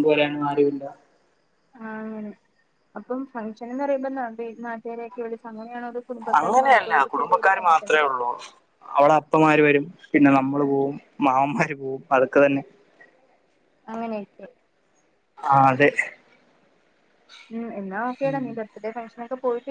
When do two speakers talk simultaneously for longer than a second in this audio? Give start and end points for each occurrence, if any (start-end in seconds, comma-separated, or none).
none